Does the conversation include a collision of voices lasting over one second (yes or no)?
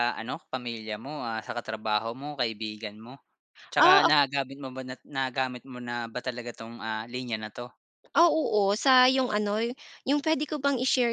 no